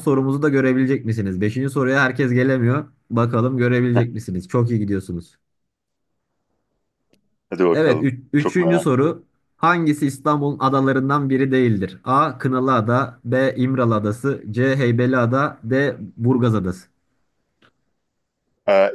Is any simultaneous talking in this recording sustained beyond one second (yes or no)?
yes